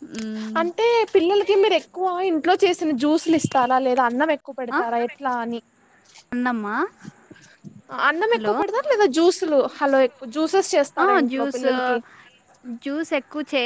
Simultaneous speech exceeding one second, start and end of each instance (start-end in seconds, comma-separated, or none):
none